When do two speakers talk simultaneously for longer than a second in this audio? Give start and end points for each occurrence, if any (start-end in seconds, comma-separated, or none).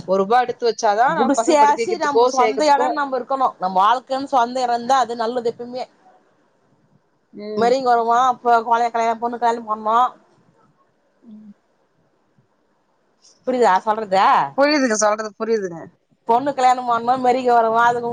1.4-2.9